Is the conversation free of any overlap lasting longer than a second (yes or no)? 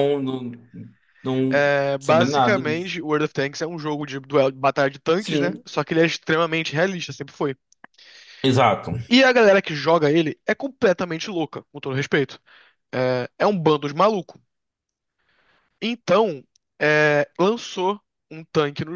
no